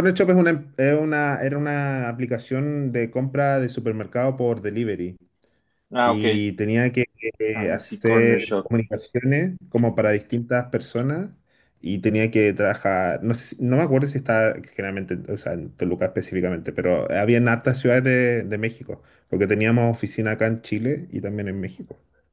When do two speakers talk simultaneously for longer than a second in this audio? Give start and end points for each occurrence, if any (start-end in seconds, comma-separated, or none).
7.5-8.7